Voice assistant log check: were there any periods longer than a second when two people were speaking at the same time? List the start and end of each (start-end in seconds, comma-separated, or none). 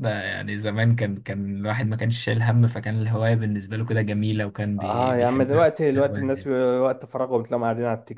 4.8-6.5